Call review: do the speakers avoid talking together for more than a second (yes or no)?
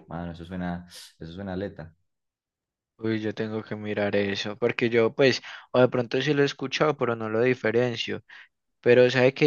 yes